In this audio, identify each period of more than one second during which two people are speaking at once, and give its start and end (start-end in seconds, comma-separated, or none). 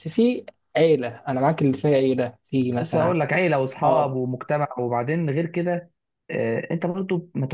none